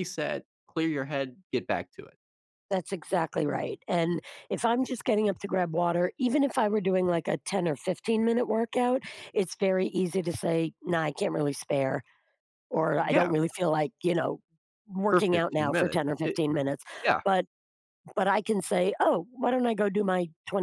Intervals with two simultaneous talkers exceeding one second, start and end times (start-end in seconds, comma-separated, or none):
15.1-16.4